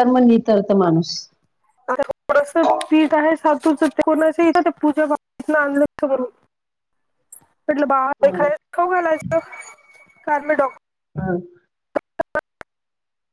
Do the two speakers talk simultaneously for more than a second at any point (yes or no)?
no